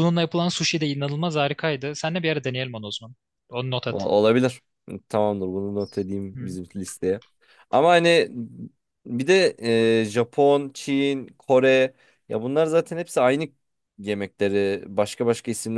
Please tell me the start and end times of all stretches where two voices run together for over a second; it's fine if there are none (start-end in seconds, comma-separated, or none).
none